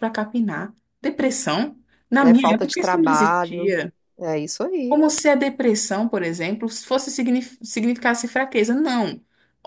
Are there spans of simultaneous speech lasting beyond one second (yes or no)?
yes